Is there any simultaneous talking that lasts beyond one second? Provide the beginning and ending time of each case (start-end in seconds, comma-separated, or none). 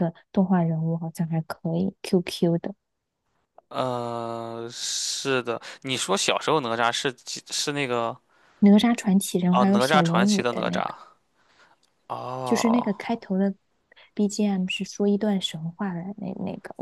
9.5-10.9